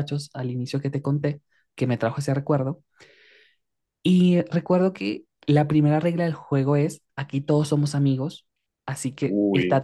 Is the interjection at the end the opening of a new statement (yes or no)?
no